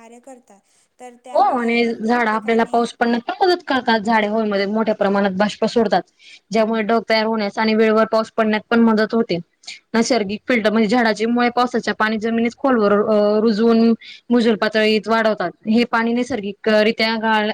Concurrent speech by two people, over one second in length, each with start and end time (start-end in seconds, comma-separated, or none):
1.3-2.8